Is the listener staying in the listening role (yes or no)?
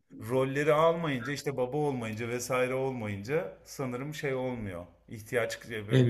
yes